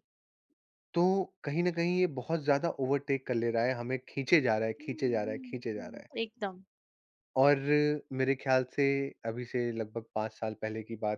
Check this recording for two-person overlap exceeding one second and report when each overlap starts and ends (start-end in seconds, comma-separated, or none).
4.8-6.1